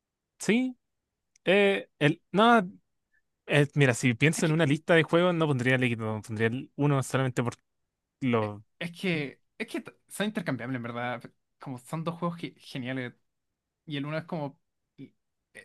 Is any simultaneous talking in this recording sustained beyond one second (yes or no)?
no